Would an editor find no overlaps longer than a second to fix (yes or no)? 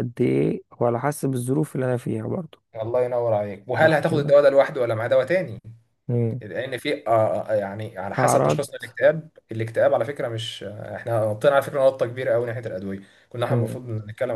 yes